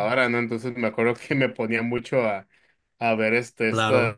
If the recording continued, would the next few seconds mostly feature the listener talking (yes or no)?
no